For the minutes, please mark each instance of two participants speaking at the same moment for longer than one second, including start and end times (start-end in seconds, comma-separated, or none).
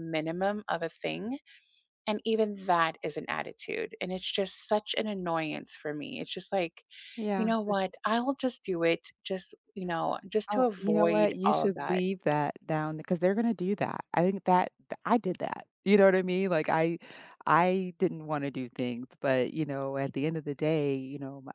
10.5-12.0